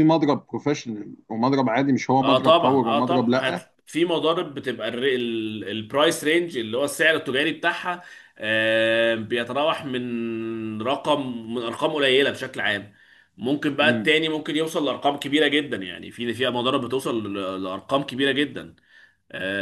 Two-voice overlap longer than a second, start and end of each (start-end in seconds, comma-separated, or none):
2.2-3.7